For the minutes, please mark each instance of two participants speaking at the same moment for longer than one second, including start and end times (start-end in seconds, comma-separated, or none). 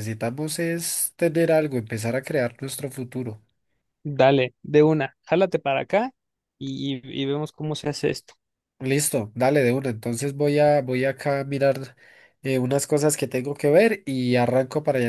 none